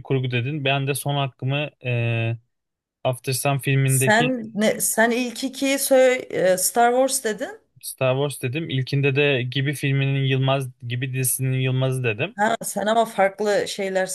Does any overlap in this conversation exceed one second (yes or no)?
no